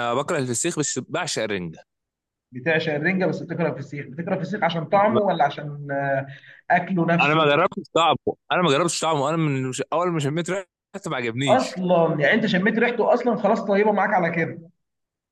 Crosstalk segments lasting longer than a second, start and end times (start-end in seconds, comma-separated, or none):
none